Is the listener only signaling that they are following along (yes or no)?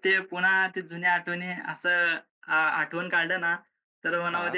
yes